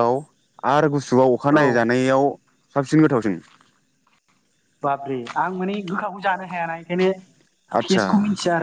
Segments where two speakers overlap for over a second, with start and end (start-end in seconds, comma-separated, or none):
none